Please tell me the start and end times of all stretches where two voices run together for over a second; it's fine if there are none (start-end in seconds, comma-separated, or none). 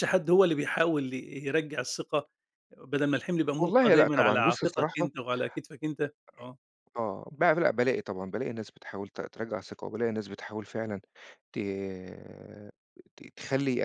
3.6-5.1